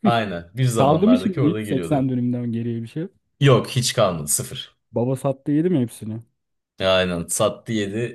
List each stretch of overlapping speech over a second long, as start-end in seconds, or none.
0.8-2.1